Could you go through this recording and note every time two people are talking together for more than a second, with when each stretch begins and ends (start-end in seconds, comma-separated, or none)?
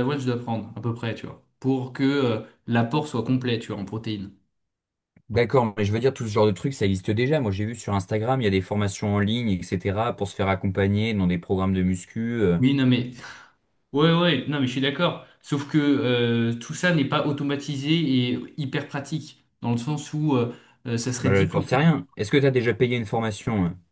none